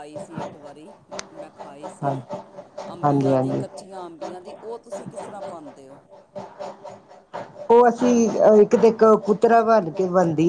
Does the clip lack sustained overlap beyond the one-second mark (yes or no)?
yes